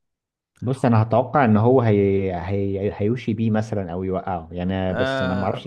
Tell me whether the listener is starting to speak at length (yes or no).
yes